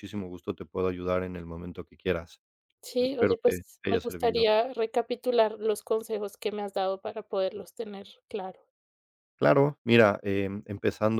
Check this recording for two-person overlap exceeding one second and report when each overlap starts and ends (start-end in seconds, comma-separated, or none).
3.0-4.4